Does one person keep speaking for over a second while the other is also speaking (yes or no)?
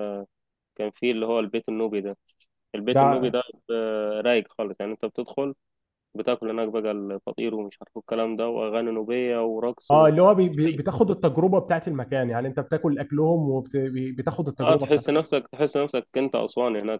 no